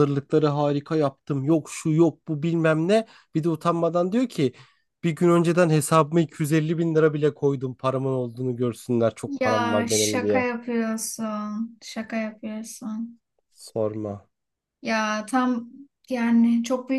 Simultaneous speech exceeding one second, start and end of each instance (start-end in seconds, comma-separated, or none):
9.2-10.5